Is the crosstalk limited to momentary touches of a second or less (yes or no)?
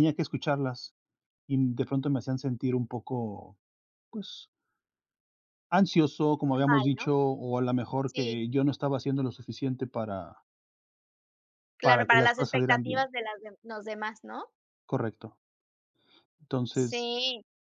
no